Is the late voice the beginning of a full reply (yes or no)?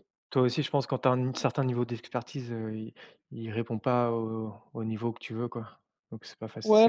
yes